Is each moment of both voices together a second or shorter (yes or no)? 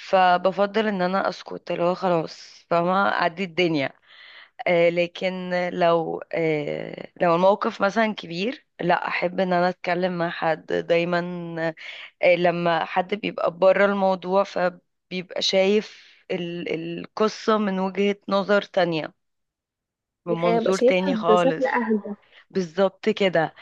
no